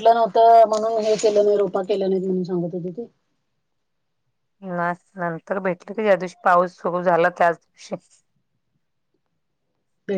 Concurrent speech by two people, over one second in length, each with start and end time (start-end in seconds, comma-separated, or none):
none